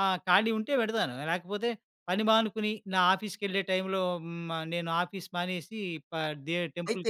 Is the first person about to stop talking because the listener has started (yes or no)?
yes